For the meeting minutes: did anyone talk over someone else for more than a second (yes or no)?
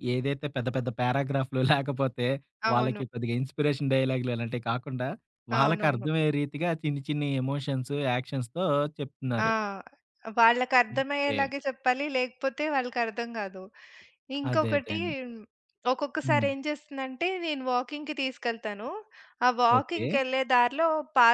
no